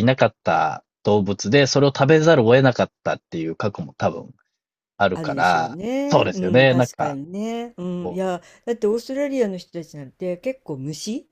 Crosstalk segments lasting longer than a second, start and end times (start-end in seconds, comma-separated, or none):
5.1-7.2